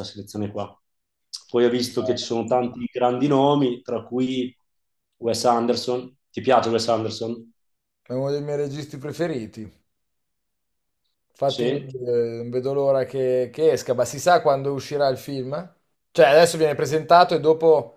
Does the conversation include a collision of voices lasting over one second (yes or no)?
no